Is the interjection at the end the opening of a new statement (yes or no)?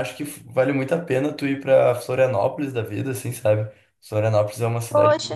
no